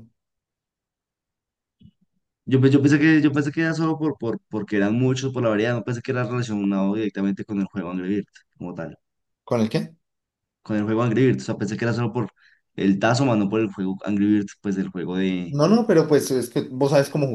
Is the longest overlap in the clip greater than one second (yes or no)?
no